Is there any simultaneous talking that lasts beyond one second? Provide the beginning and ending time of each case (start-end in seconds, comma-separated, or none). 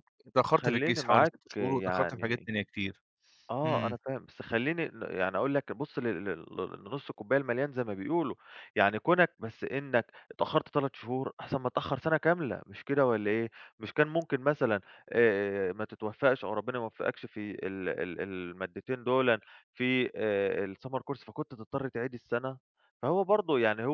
0.6-2.5